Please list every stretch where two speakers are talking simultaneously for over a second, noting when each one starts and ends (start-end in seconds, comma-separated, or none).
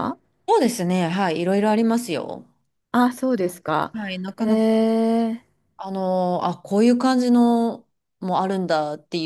none